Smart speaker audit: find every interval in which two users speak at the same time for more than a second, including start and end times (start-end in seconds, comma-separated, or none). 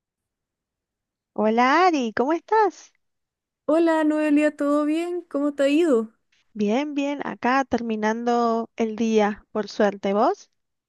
none